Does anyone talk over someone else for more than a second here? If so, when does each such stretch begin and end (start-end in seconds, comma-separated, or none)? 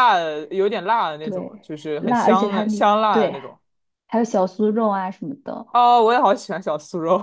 1.2-3.4